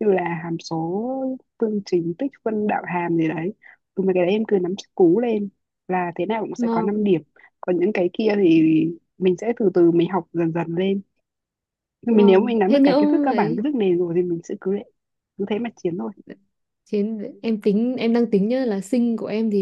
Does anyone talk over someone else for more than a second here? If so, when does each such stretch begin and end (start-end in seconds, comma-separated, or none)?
12.1-13.6